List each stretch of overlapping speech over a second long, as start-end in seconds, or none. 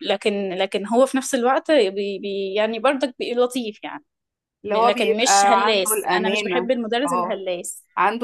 4.7-7.4